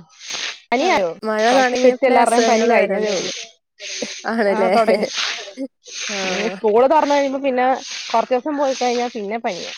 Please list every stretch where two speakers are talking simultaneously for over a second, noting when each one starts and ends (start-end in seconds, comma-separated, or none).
1.5-3.2